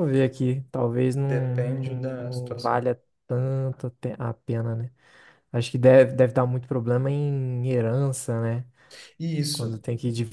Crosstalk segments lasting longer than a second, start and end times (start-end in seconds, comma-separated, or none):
1.3-2.9